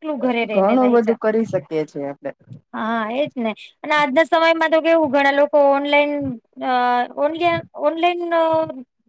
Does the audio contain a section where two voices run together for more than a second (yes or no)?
no